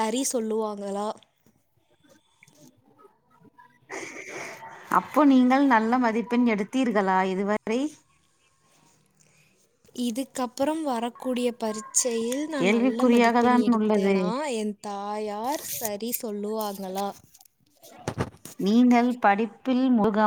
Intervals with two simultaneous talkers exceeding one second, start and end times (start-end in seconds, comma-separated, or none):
12.6-14.1